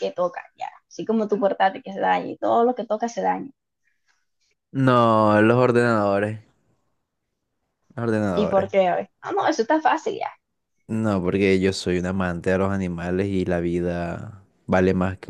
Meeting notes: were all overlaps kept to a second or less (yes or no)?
yes